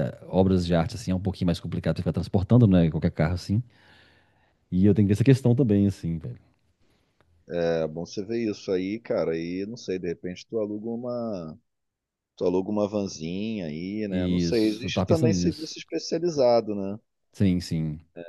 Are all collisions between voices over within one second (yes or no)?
no